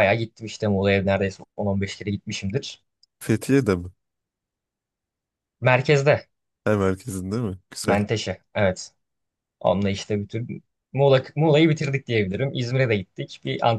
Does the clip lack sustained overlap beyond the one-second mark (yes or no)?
yes